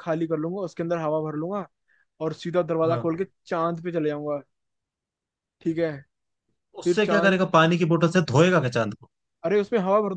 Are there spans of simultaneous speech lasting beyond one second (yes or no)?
no